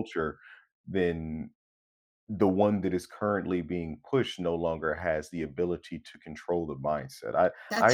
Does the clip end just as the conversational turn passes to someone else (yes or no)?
no